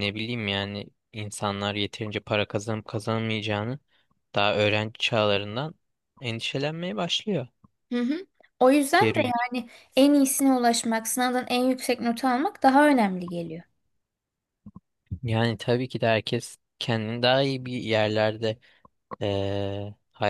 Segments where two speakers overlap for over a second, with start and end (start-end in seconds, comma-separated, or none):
none